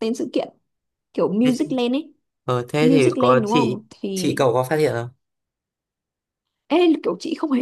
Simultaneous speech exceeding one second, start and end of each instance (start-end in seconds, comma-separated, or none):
2.8-4.4